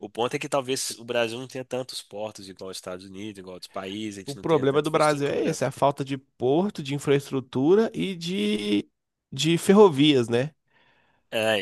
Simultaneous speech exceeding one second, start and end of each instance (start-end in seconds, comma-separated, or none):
4.3-5.6